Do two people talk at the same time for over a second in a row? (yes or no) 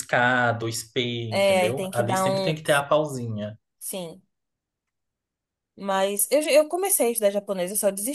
yes